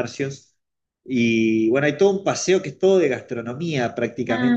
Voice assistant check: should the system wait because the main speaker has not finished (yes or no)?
no